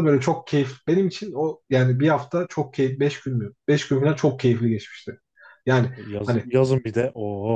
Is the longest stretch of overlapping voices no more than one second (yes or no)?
yes